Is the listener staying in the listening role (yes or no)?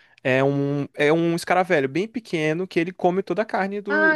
no